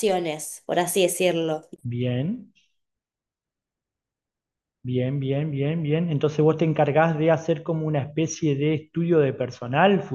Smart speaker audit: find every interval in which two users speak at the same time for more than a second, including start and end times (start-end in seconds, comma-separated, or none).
none